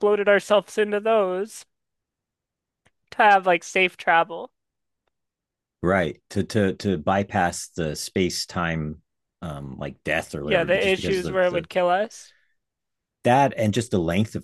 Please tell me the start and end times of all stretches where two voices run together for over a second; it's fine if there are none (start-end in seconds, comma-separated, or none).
10.4-11.7